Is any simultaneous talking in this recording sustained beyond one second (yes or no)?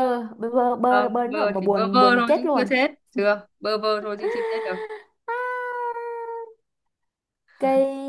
yes